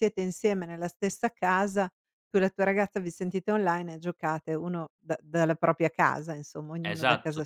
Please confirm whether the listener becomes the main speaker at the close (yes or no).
yes